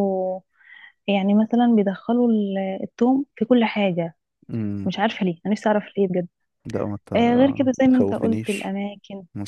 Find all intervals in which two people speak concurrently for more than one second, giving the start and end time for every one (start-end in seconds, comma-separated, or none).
7.2-8.7